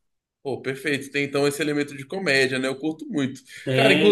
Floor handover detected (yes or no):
yes